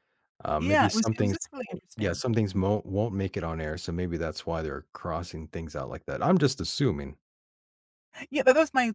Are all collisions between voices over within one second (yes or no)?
no